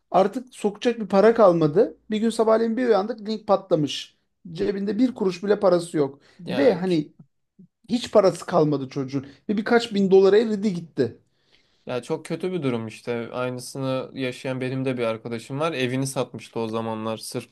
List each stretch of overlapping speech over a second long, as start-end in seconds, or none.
none